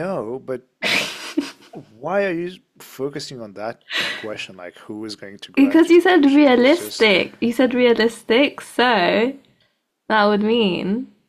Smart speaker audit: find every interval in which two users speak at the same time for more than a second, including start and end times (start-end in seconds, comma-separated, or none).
5.5-7.1